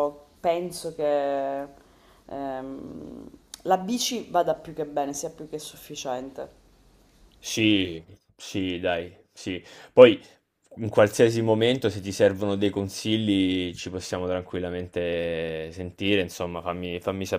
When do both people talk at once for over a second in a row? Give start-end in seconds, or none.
none